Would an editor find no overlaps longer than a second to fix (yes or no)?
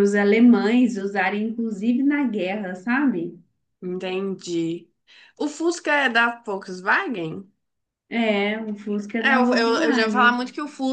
no